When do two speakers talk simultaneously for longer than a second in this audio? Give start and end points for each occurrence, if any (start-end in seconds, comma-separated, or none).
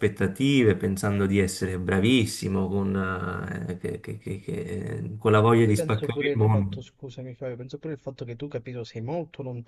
5.5-6.8